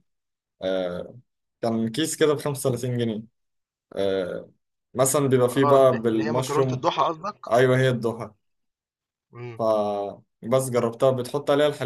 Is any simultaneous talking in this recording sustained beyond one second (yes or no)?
yes